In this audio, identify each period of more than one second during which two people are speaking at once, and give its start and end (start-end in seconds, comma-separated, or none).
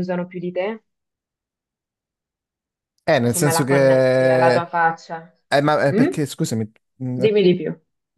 3.3-4.5